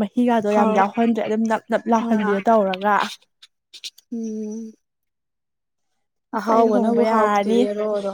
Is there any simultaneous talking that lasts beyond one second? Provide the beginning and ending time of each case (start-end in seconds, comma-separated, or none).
6.4-7.6